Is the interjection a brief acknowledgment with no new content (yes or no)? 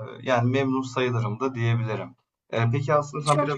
yes